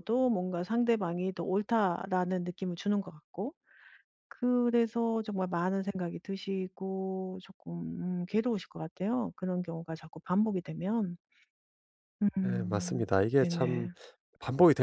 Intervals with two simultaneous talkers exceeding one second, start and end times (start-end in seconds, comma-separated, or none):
12.4-13.9